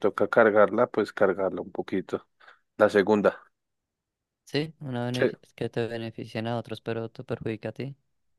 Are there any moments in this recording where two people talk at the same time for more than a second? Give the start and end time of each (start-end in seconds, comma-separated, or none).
none